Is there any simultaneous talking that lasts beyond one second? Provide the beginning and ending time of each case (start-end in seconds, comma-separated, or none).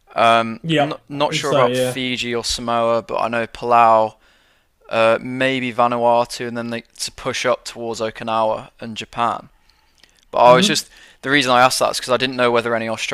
0.6-2.0